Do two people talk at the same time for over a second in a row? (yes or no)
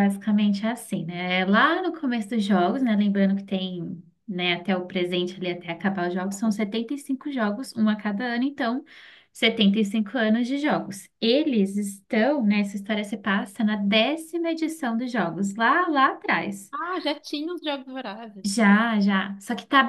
no